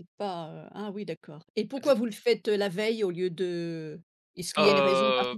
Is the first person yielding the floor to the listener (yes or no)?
yes